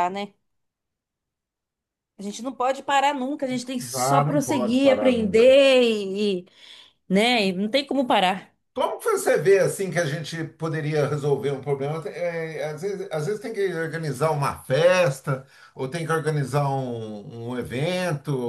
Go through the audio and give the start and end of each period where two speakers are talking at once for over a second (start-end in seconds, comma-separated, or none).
3.9-5.3